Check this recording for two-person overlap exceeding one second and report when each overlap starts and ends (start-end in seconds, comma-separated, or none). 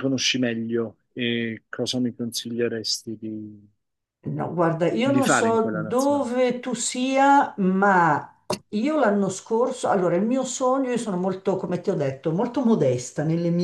5.0-6.3